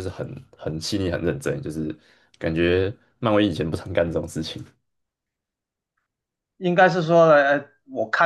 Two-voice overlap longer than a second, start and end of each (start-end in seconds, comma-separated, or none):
none